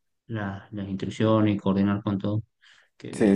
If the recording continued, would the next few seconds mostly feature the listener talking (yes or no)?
yes